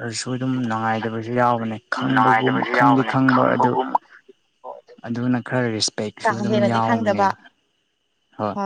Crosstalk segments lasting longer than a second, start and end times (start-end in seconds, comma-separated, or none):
2.0-3.7